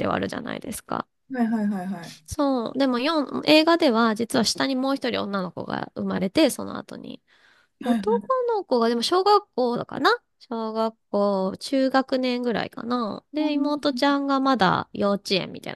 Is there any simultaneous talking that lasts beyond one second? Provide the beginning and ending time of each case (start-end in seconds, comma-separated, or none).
none